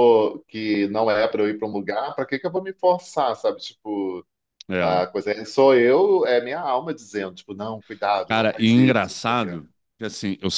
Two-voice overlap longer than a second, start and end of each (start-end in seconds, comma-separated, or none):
8.3-9.5